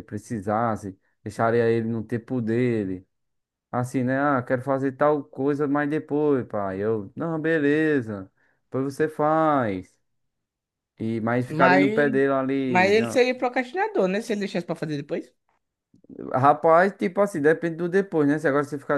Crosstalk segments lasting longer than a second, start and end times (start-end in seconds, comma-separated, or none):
none